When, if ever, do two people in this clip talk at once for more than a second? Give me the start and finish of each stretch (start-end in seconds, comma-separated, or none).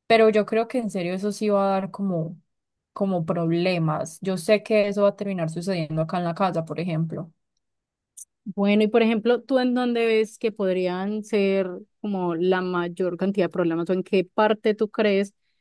none